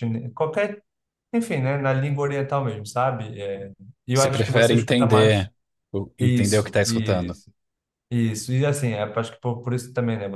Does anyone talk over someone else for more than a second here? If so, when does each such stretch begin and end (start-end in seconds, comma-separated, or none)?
4.1-5.5, 6.2-7.4